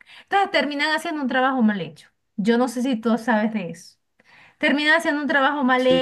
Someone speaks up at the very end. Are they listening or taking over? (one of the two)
listening